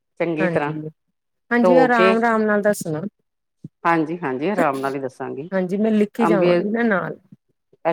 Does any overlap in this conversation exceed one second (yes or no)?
no